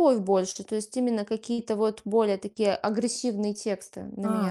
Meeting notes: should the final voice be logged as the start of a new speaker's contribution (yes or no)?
yes